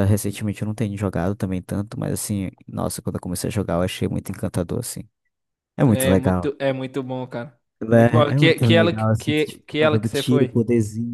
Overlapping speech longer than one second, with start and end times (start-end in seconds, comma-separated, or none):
7.8-10.6